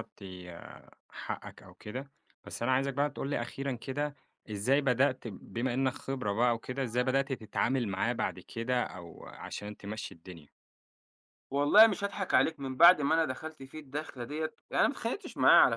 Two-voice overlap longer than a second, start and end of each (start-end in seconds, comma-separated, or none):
none